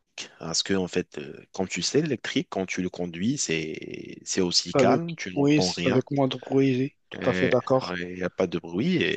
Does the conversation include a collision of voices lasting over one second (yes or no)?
yes